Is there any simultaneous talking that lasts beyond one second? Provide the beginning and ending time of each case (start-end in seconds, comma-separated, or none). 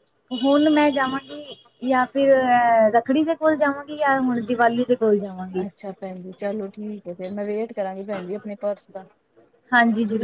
none